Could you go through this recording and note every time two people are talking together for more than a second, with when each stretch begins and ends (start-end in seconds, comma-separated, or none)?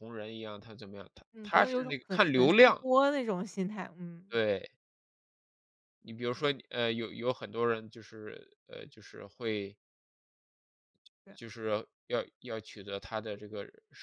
1.3-2.8